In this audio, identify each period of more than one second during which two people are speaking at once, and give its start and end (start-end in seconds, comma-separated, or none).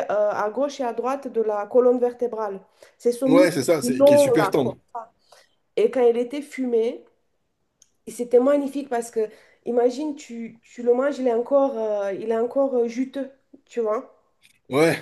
3.3-4.8